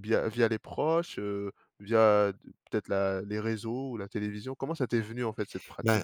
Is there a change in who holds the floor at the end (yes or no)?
yes